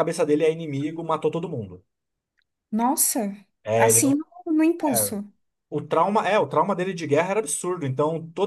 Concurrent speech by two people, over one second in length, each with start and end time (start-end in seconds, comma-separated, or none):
none